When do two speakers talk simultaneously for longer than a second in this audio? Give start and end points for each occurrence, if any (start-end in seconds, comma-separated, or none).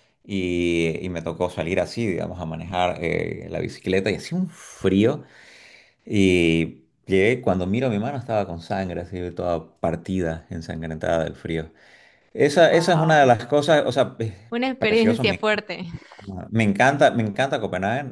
none